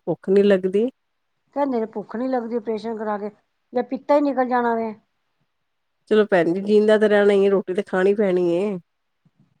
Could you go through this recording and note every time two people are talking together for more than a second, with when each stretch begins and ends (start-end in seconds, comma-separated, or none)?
none